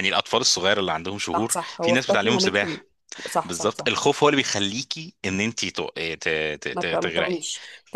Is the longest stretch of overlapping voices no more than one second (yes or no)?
no